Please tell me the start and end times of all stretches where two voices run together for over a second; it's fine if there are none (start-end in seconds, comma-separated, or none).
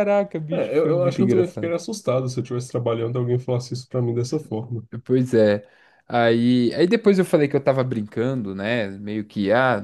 0.5-1.7